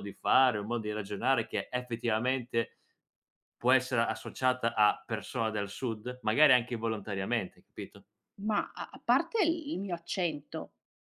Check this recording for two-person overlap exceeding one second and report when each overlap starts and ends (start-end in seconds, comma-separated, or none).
none